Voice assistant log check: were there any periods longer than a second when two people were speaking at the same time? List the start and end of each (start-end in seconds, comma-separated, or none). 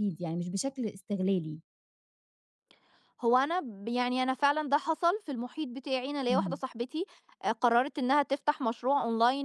none